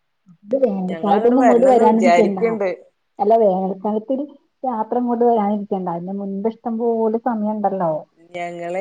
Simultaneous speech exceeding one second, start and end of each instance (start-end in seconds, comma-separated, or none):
0.9-2.4